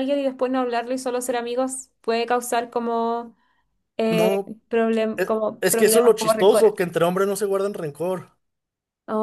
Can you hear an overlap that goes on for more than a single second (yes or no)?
yes